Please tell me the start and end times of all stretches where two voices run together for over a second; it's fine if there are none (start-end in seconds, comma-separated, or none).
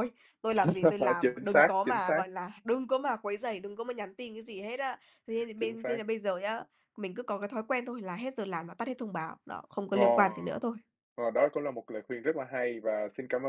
0.6-2.2